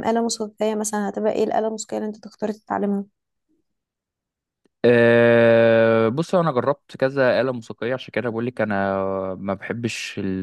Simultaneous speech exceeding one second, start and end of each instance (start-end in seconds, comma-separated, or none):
none